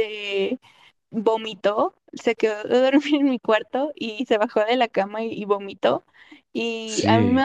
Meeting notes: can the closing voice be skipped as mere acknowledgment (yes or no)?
yes